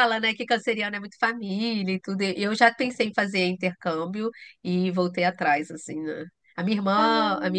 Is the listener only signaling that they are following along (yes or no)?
yes